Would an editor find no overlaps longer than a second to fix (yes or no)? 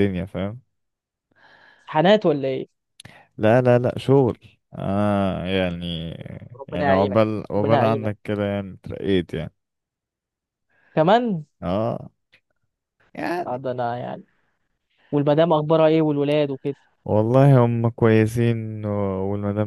no